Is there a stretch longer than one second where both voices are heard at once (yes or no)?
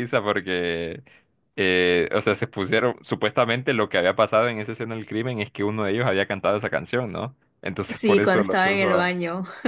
yes